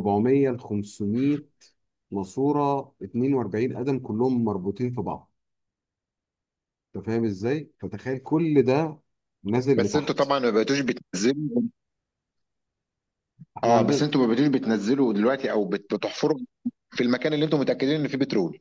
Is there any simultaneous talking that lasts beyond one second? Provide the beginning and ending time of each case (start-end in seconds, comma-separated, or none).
none